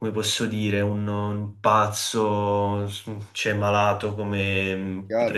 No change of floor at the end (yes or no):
no